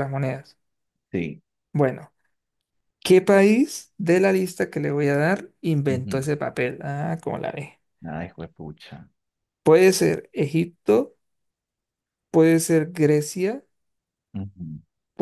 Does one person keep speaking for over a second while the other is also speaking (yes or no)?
no